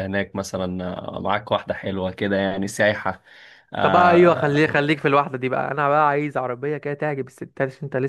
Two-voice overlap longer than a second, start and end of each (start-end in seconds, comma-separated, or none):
3.8-5.0